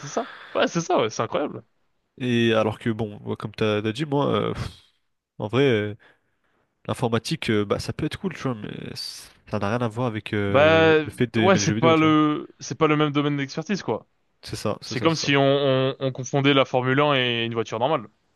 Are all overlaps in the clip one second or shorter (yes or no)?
no